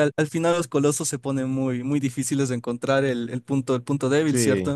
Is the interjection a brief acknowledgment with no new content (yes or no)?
no